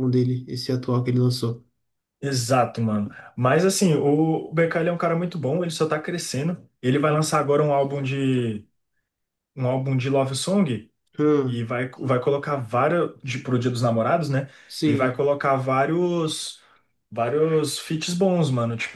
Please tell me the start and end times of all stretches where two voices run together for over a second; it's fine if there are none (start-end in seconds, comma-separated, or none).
none